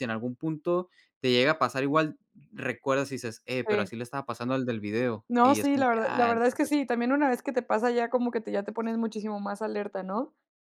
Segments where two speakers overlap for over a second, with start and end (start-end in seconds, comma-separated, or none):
5.3-6.8